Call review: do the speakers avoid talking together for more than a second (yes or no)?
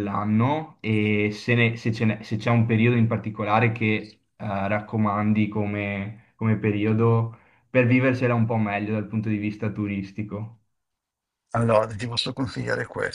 yes